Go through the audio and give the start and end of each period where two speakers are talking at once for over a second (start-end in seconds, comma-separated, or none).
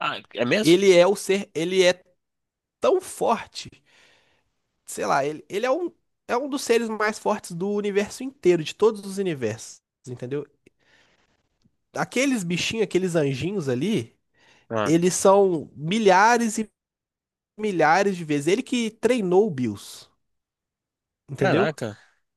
none